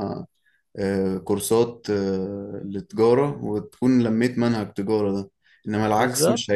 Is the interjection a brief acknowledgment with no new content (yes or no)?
yes